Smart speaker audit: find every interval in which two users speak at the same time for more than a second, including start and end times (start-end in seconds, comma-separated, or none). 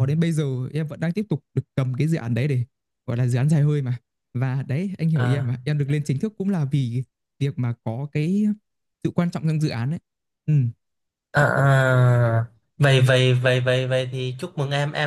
none